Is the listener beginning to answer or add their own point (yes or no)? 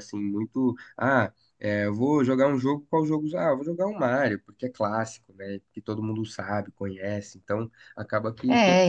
yes